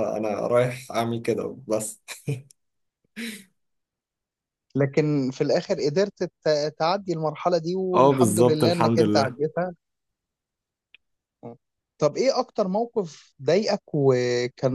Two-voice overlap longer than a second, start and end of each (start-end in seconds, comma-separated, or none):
7.9-9.4